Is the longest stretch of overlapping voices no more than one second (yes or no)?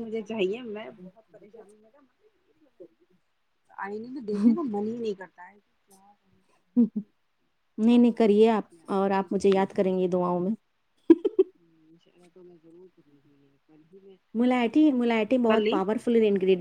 no